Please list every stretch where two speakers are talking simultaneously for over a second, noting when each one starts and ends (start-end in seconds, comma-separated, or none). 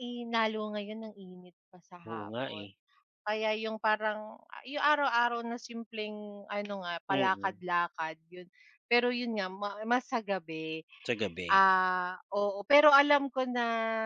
none